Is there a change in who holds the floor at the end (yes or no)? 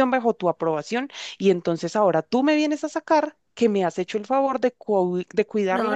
yes